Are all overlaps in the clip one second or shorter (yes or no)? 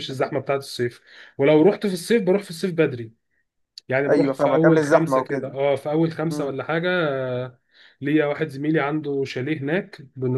no